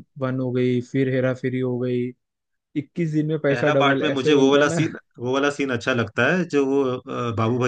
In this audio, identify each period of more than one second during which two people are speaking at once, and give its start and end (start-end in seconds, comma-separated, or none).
3.5-4.8